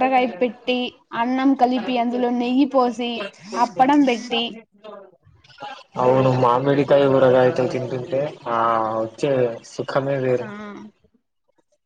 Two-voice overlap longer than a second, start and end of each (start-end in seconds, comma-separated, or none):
none